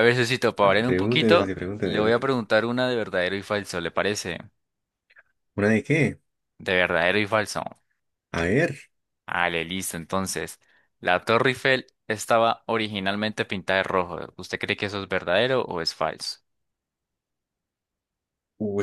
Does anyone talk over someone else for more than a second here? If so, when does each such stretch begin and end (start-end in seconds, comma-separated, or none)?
0.6-2.2